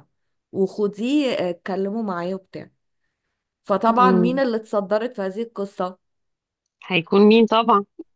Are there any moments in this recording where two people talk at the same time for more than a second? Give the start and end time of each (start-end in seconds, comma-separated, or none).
none